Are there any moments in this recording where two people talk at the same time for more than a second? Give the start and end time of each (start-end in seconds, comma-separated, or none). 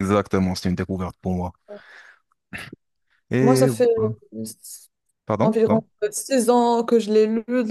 none